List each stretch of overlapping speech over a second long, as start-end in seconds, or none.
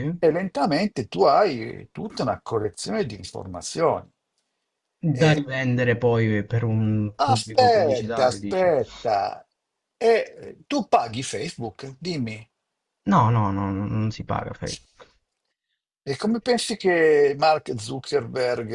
7.2-8.7